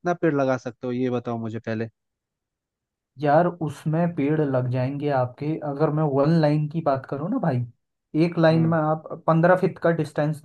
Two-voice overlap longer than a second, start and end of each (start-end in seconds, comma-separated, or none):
none